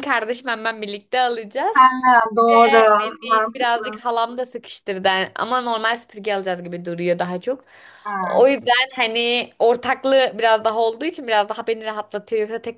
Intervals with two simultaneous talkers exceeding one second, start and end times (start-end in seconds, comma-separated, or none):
2.5-4.1